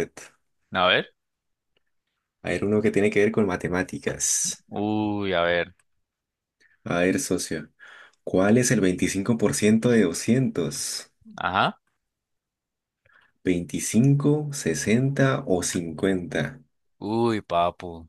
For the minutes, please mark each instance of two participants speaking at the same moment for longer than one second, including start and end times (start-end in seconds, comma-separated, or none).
none